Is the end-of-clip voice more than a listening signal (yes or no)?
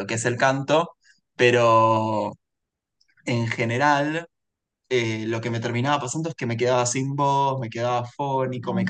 no